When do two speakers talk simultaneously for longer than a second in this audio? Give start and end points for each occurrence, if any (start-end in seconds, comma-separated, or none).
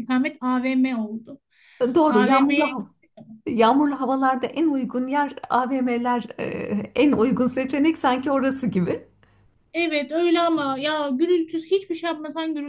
none